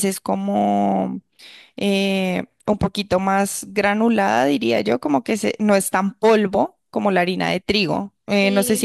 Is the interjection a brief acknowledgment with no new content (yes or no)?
yes